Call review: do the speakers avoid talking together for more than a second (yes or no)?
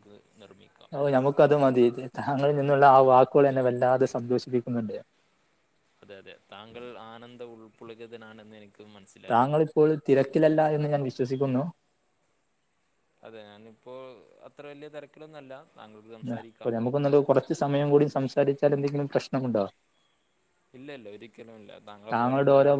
yes